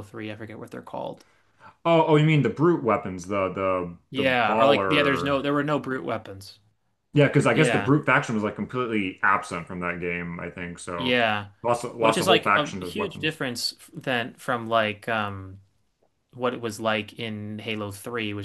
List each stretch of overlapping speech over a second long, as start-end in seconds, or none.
4.1-5.4, 12.0-13.4